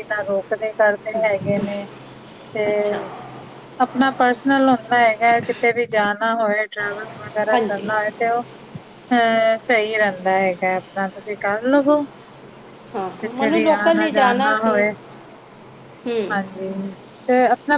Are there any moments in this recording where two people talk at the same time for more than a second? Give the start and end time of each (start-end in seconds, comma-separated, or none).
13.2-14.8